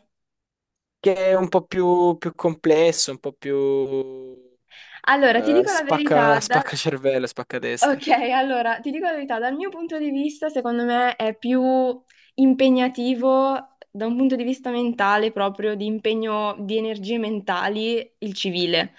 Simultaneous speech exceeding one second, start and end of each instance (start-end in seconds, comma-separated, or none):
5.2-6.6